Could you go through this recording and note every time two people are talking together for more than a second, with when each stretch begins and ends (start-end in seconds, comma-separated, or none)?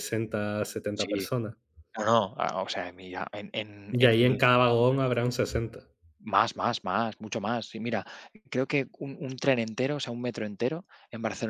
none